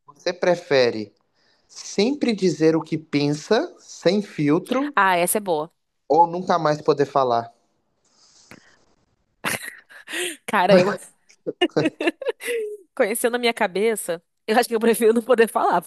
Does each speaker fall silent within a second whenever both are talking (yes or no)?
yes